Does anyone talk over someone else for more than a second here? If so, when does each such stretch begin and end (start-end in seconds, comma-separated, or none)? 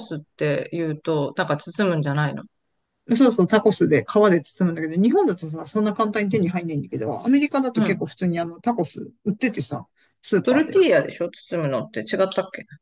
none